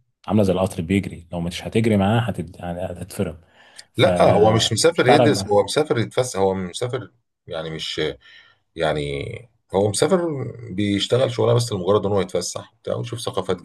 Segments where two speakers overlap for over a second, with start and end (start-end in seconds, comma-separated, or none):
4.0-5.4